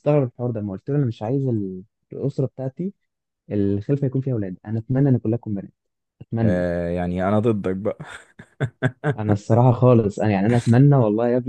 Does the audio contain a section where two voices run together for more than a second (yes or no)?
no